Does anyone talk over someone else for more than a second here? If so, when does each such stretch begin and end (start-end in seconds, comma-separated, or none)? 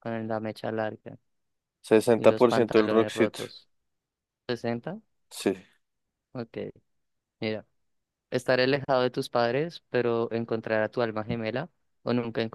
2.2-3.4